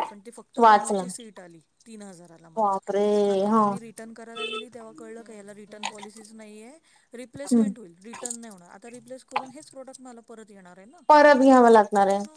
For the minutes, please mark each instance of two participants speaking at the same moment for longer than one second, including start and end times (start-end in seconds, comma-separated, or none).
none